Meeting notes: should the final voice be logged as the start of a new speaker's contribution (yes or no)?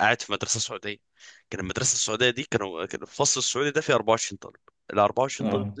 no